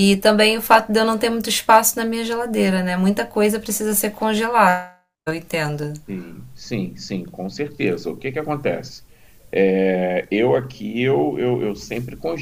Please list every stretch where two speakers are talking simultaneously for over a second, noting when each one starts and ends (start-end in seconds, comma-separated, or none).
none